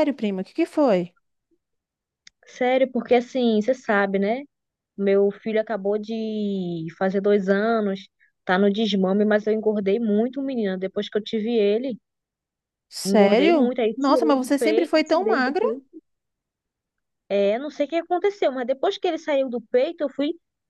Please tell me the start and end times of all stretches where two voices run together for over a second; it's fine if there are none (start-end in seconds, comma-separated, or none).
13.1-15.7